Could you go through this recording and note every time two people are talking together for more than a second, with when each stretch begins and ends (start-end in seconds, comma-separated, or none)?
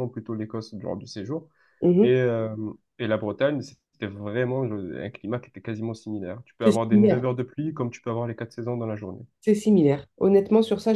none